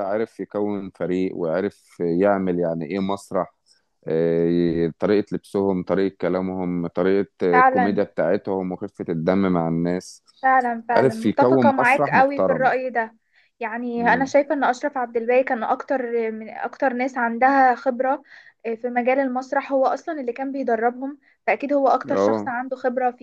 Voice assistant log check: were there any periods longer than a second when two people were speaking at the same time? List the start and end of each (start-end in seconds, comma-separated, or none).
10.9-12.7